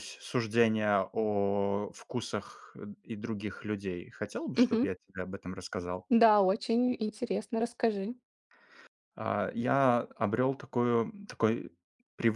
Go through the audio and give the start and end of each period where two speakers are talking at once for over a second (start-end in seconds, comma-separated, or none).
none